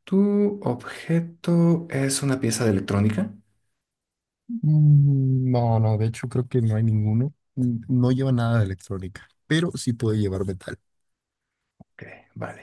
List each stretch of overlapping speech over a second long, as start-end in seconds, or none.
none